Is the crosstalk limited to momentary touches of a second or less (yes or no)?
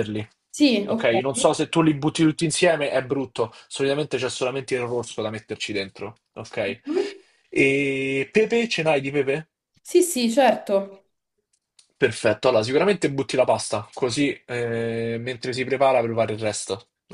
yes